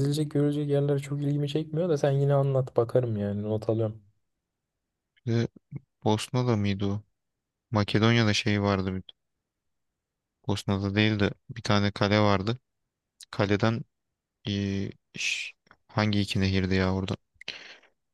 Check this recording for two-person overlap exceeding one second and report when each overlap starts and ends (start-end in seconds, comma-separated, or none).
none